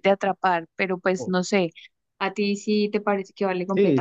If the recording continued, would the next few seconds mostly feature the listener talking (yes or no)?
yes